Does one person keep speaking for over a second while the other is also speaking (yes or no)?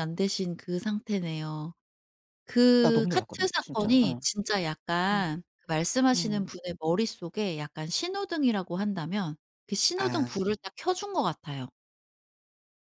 yes